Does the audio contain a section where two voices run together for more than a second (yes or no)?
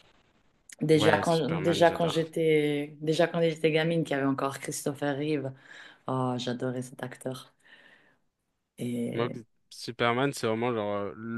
yes